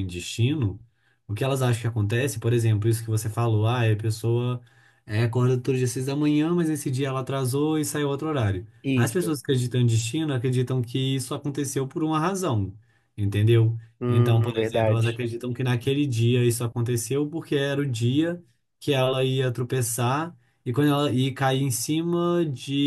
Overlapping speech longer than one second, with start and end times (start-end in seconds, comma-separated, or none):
14.0-15.2